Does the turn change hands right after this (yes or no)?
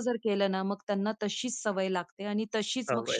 no